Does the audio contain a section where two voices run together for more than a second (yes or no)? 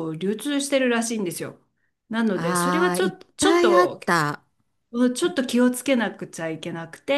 yes